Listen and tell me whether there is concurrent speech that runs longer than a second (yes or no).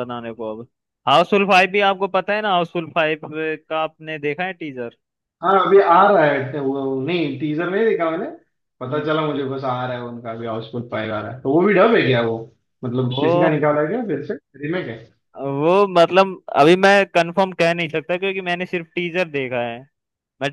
no